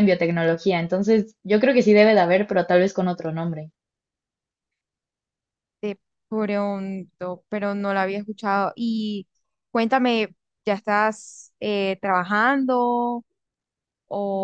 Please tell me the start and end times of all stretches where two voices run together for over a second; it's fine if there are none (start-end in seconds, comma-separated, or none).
none